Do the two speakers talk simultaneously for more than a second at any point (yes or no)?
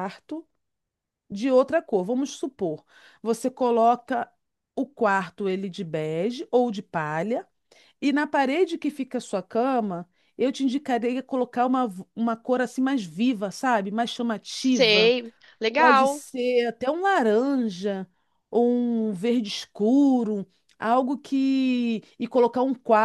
no